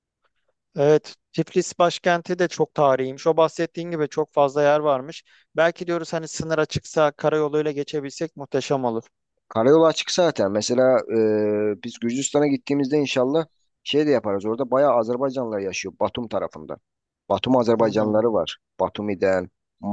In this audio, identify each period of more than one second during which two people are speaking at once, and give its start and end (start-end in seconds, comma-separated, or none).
none